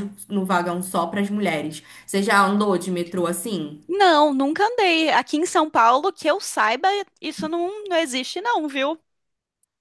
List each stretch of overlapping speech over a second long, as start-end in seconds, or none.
none